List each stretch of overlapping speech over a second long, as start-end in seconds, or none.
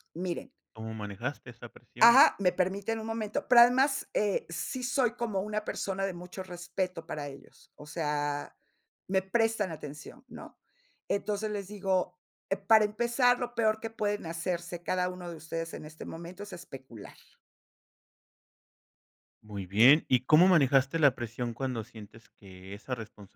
none